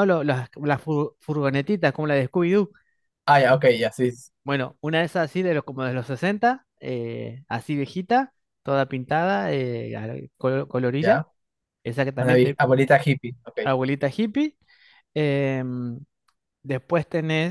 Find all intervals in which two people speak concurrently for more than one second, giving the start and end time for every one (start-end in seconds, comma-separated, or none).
none